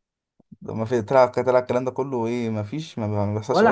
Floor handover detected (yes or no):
yes